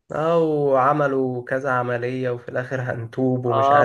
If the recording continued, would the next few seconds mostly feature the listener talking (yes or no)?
yes